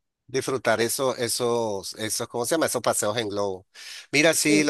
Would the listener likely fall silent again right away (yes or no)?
yes